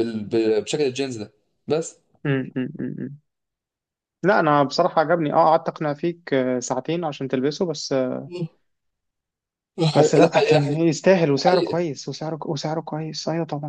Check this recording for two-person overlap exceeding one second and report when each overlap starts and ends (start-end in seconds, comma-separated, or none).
none